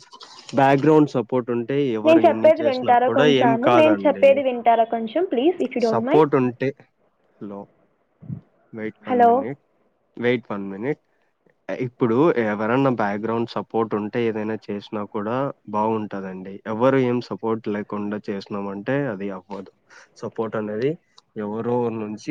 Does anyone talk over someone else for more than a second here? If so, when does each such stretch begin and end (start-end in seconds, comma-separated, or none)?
2.0-4.2